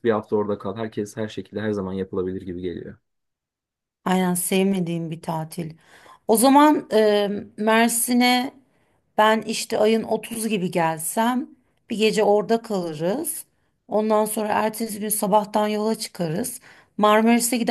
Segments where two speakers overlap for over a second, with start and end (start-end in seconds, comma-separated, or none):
none